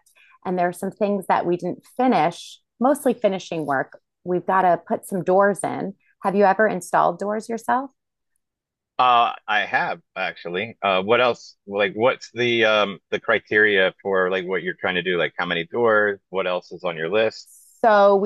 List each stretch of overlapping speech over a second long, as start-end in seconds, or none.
none